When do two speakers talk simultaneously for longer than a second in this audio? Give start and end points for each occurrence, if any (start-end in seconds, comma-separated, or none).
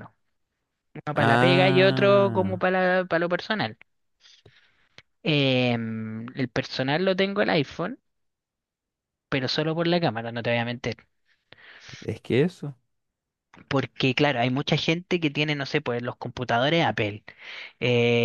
1.1-2.6